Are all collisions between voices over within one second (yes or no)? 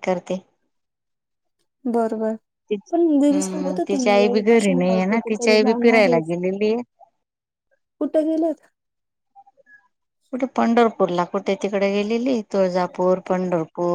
no